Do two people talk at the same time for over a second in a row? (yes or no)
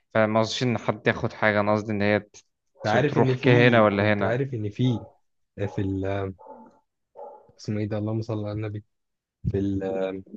yes